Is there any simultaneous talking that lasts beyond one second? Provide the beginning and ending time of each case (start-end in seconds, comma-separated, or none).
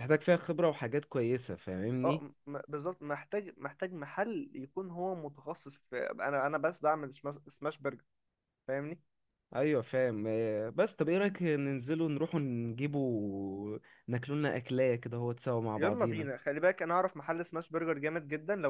none